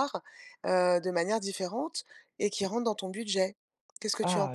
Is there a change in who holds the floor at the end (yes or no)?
yes